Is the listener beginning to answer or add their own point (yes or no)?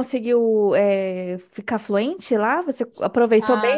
yes